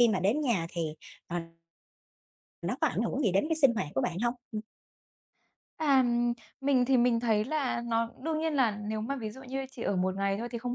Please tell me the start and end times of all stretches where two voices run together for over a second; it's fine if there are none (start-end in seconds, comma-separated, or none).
none